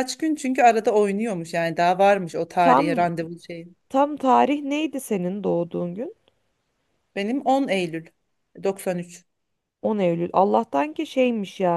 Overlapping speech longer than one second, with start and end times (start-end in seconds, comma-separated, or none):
none